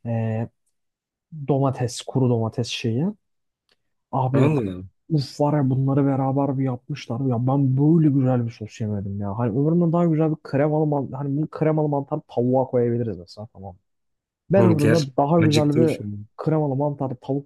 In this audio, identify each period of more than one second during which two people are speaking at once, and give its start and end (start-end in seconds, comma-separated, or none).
14.6-15.9